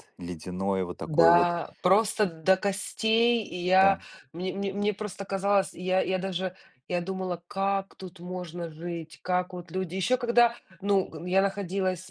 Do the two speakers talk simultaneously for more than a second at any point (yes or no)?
no